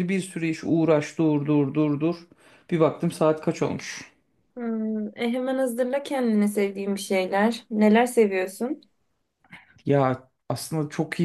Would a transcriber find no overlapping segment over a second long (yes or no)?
yes